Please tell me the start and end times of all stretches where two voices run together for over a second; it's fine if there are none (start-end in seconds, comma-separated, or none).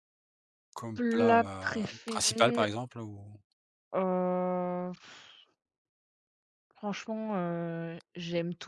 0.9-2.7